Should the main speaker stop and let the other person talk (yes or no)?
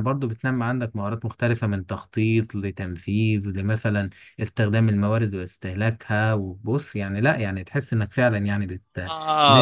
yes